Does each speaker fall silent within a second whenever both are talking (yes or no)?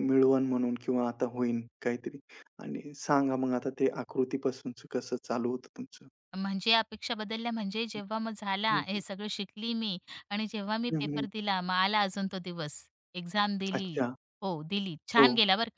yes